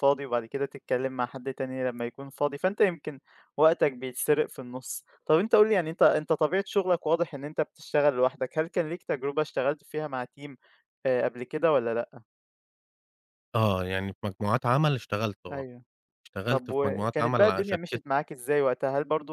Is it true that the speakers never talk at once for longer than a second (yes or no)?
no